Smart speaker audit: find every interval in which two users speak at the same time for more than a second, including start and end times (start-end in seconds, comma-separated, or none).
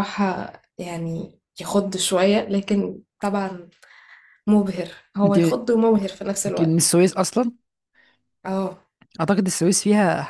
none